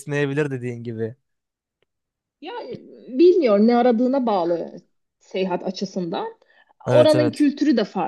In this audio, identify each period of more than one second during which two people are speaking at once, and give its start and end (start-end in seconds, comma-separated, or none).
none